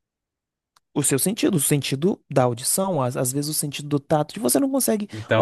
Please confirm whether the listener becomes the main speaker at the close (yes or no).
yes